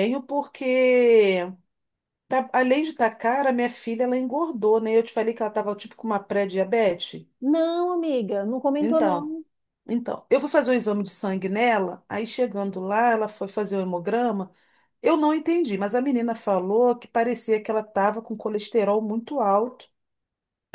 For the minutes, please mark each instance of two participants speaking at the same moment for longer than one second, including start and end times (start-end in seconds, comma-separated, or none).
none